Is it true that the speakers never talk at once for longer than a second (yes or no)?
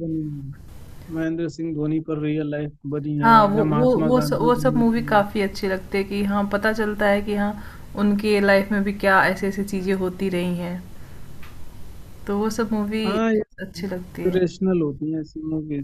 no